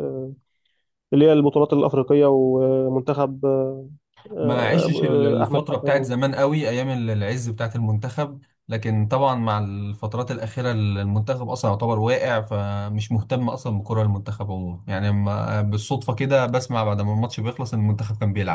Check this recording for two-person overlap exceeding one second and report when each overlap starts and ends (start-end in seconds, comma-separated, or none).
4.4-6.1